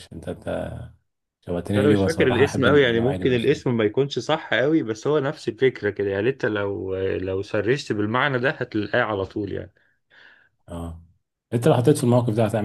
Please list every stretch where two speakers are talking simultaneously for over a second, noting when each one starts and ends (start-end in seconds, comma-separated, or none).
1.5-3.6